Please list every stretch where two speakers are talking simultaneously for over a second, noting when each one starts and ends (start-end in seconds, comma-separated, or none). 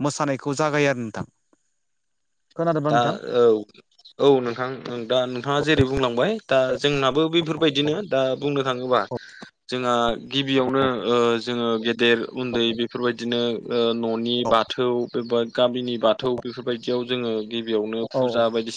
none